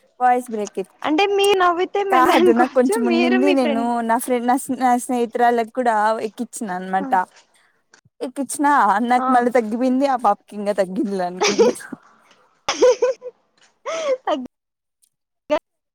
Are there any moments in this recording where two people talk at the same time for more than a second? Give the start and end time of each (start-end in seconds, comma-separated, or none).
2.1-3.9